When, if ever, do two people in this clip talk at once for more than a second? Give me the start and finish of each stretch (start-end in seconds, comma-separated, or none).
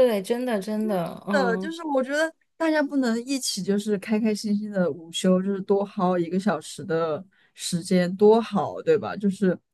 none